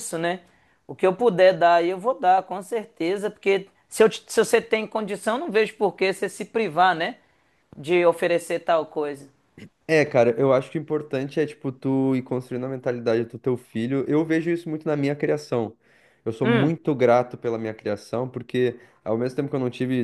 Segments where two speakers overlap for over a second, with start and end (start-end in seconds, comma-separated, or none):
none